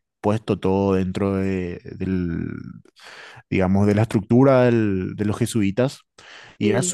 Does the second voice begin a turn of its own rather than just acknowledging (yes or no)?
no